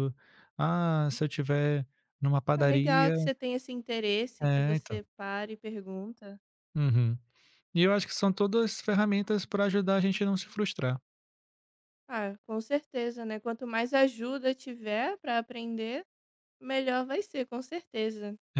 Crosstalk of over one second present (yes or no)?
no